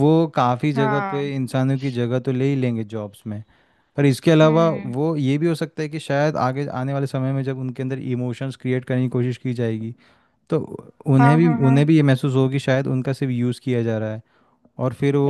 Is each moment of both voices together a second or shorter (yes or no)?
yes